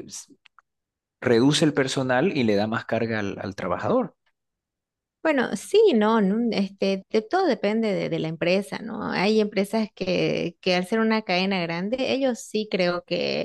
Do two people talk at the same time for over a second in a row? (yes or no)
no